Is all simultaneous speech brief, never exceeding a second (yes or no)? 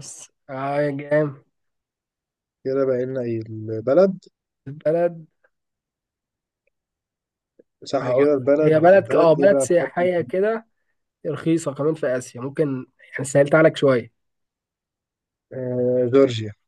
no